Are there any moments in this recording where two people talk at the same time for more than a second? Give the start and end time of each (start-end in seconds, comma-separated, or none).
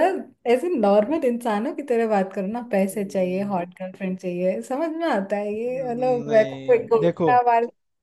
5.6-7.3